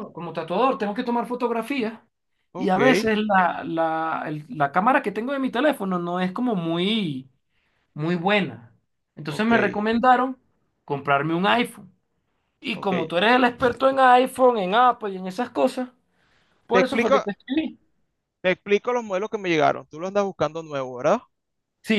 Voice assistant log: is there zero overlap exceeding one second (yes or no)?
yes